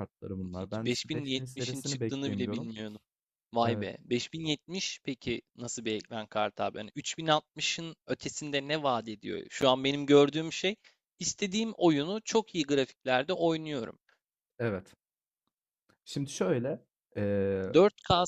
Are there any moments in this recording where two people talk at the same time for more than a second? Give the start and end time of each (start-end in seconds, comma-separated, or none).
0.6-2.7